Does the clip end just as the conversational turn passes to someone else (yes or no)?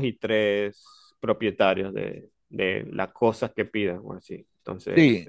yes